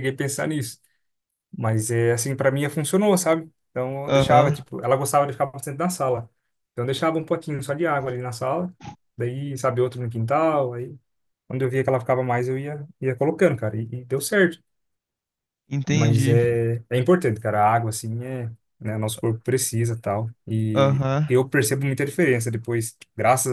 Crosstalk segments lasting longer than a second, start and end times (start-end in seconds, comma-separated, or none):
none